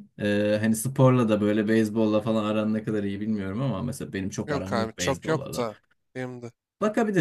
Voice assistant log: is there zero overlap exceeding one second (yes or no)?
no